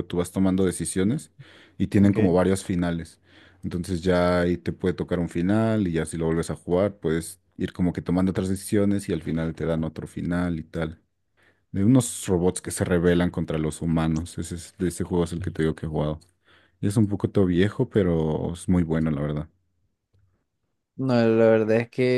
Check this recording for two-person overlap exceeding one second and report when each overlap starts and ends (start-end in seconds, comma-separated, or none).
none